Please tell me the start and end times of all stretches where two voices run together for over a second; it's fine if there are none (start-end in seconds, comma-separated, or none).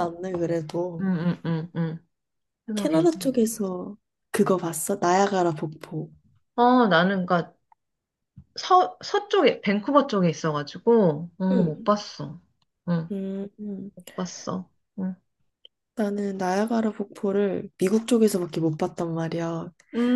none